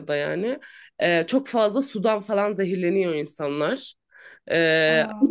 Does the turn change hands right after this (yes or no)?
no